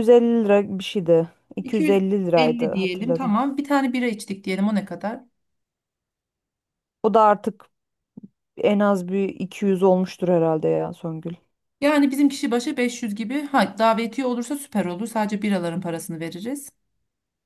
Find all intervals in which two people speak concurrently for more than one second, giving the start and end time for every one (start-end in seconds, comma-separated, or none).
1.6-3.4